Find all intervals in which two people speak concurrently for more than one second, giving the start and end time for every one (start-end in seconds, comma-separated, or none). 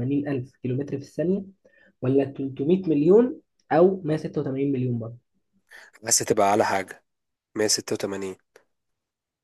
none